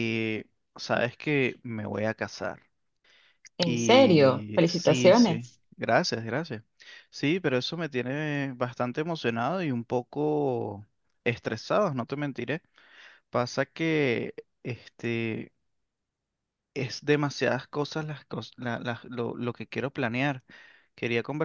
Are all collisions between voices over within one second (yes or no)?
no